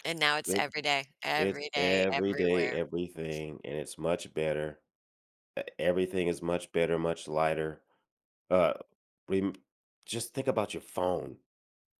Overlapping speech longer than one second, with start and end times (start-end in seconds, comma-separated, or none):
1.4-2.8